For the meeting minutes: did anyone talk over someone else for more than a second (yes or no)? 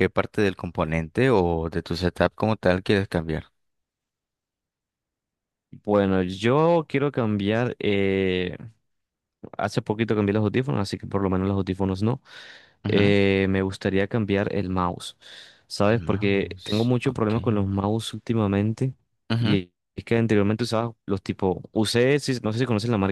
yes